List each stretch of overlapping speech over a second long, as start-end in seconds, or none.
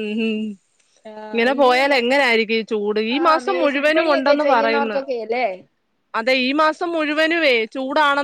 3.2-5.0